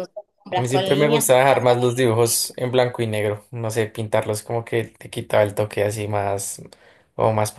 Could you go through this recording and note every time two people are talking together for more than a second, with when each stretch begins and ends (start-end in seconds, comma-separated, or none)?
0.5-2.0